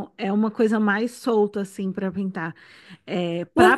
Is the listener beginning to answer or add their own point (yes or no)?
yes